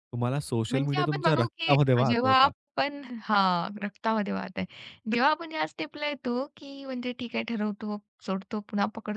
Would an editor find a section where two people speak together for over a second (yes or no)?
yes